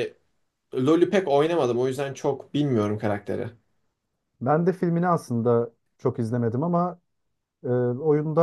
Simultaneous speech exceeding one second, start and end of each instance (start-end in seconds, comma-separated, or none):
none